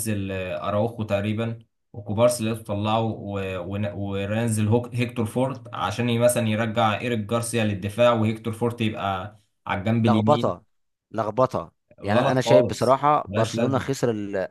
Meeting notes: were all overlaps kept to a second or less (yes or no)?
no